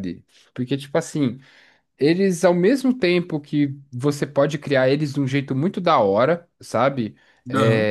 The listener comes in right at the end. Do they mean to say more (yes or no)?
no